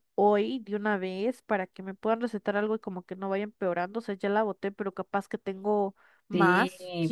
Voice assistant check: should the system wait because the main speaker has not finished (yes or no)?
no